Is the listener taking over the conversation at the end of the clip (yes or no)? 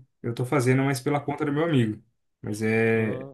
yes